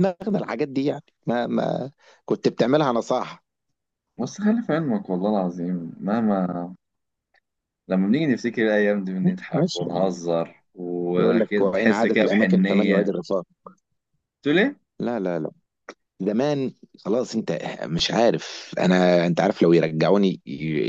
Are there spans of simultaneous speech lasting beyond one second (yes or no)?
yes